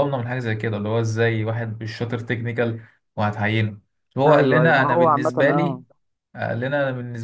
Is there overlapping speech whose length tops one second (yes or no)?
yes